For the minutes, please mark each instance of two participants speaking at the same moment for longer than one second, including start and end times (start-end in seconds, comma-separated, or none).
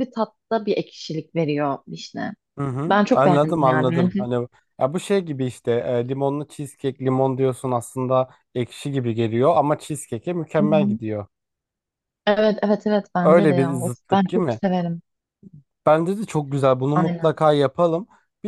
2.9-4.2, 13.2-14.6